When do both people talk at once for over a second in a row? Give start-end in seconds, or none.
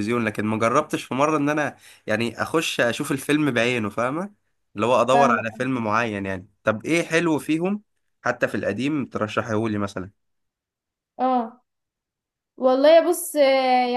none